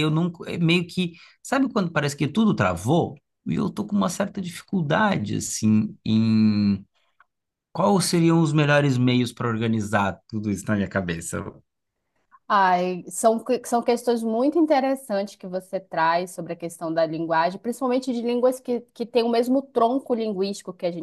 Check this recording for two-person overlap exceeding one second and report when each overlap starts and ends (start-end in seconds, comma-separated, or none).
none